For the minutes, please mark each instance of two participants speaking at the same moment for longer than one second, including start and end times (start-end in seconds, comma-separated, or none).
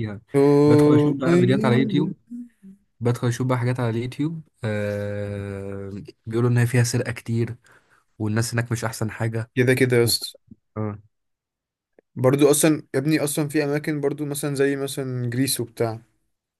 0.7-2.1